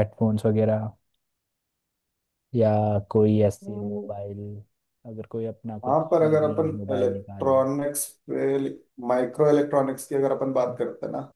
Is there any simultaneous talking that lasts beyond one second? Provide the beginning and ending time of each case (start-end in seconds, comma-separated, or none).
5.8-7.6